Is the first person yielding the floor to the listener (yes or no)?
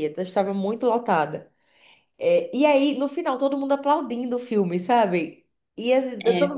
no